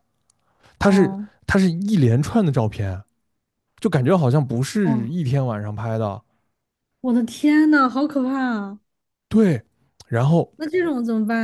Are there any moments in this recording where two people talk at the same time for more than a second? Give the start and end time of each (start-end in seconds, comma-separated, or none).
none